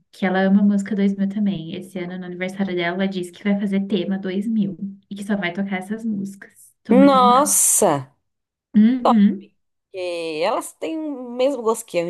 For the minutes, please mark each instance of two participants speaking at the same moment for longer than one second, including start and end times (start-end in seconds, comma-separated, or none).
none